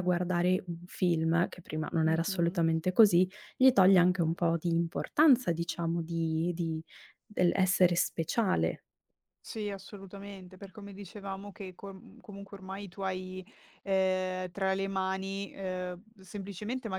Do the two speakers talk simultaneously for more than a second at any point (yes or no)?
no